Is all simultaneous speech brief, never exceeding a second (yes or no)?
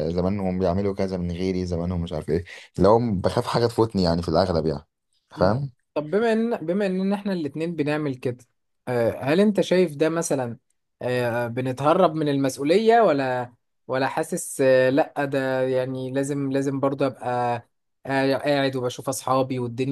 yes